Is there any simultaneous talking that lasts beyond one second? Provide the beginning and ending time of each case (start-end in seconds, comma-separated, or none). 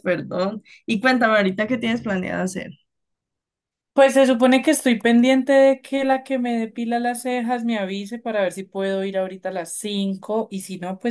none